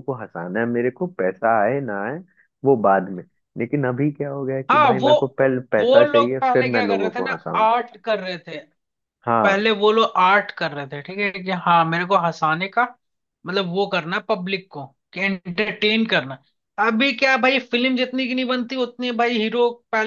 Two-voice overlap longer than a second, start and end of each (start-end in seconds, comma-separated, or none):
5.8-7.7